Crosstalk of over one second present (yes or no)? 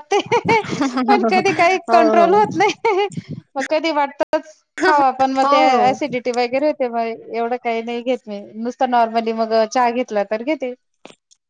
yes